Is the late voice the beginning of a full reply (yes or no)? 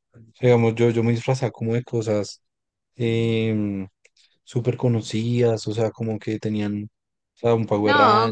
yes